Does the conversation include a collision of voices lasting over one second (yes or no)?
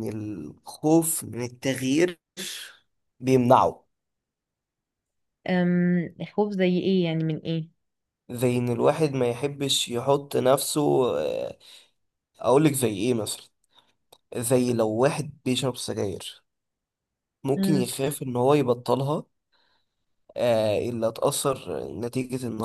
no